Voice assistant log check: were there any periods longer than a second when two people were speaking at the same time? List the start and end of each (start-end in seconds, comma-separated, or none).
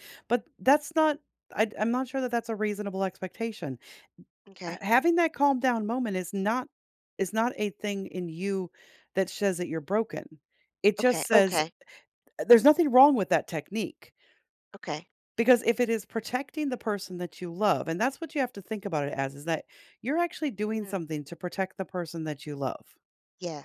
none